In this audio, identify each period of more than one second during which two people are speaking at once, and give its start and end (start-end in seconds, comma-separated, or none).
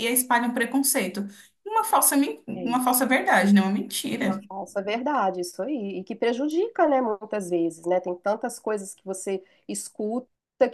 none